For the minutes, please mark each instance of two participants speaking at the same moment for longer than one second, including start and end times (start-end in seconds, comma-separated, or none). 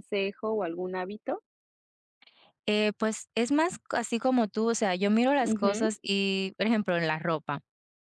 none